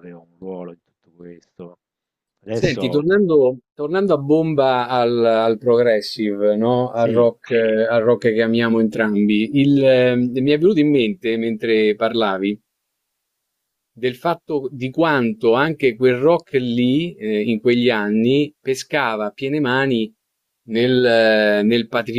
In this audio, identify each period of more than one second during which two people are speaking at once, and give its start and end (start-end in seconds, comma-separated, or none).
none